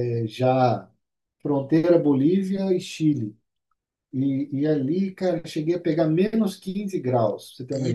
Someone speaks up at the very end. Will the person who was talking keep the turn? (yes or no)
no